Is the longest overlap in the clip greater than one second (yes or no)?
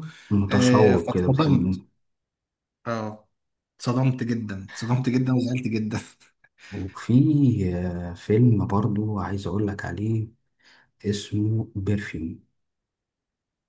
yes